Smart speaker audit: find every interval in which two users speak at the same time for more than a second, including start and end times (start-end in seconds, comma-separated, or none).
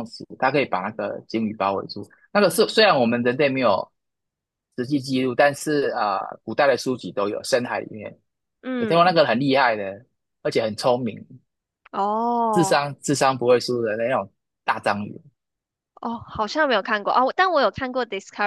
none